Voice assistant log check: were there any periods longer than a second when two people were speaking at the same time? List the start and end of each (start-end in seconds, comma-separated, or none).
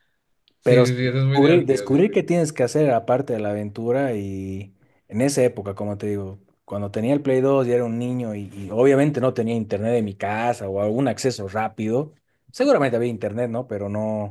0.6-2.1